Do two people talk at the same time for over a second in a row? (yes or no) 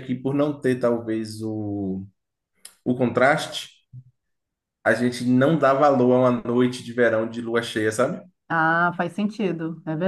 no